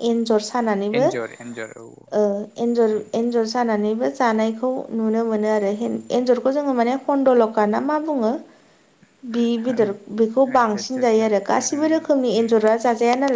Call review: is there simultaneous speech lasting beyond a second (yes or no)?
yes